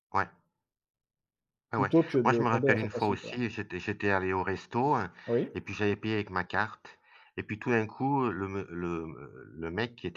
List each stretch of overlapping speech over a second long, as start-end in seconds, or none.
1.7-3.4